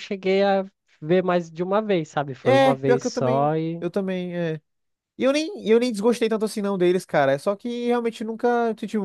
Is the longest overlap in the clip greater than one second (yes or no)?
yes